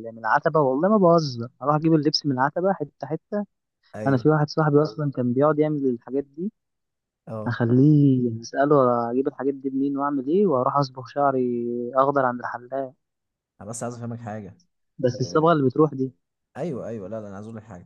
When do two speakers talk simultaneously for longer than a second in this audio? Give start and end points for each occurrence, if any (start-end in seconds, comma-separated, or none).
none